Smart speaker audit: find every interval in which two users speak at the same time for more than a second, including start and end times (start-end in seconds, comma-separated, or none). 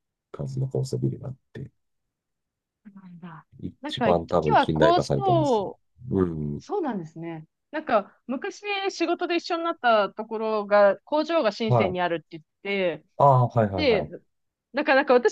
3.6-5.6